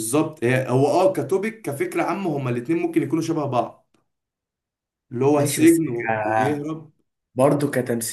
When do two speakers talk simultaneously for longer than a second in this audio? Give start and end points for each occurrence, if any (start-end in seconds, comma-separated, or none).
5.4-6.6